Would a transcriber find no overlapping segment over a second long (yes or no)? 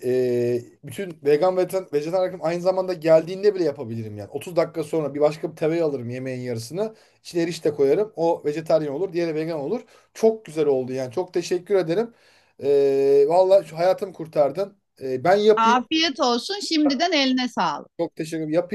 yes